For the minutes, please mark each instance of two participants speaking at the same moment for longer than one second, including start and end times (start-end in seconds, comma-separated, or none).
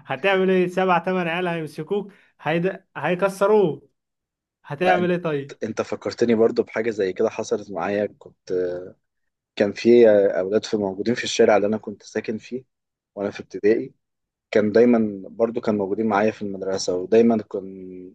none